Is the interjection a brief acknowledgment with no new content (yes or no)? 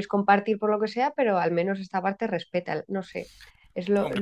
no